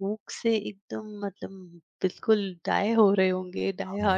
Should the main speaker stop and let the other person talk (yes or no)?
yes